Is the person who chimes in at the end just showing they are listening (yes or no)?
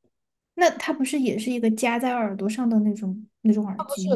no